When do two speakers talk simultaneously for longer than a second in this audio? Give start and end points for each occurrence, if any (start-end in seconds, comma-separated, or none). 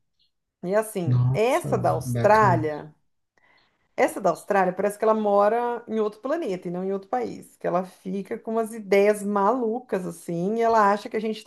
1.0-2.7